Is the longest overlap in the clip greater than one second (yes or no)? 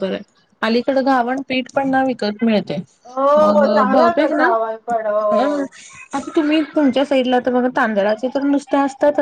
yes